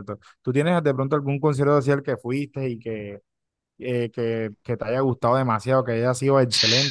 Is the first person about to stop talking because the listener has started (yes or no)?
yes